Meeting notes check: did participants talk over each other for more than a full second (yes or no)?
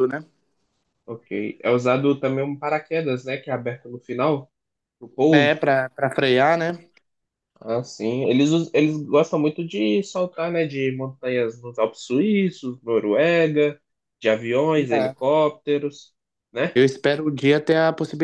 no